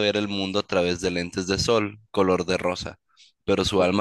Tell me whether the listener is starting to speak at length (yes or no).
no